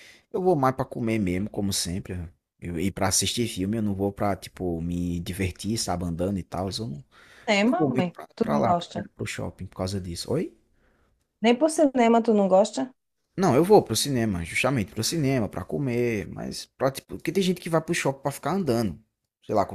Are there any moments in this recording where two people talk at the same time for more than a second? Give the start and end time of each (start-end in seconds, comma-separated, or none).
7.6-9.1